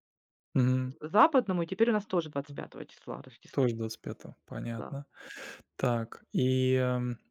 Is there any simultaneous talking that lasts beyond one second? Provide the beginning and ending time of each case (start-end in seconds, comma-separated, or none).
none